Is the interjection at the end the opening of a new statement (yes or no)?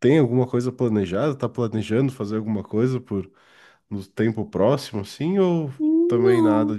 yes